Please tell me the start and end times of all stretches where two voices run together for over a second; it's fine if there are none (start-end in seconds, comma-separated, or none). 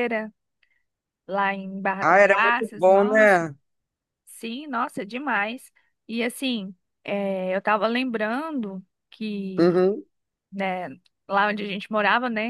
2.0-3.4